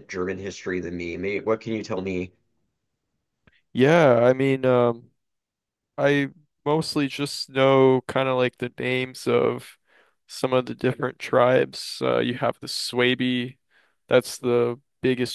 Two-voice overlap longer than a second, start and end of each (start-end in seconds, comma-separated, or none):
none